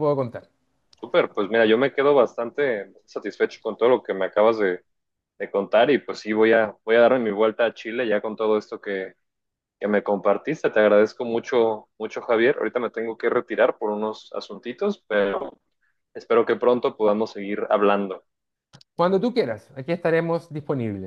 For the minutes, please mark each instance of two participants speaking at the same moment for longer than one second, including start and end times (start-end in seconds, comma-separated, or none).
none